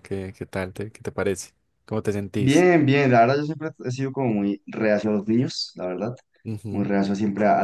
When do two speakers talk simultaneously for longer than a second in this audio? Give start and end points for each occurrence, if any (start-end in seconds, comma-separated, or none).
none